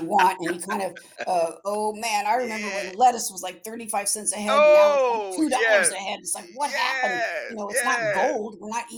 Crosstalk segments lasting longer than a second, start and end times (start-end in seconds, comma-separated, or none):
4.5-5.9, 6.7-8.3